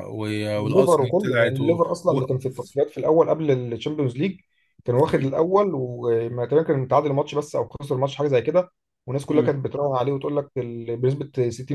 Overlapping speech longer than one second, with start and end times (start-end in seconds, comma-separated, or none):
0.7-2.2